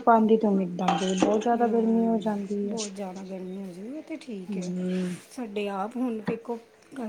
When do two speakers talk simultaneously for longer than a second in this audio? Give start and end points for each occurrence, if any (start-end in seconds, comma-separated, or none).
none